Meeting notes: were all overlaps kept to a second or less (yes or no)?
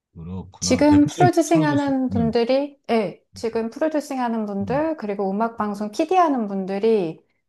no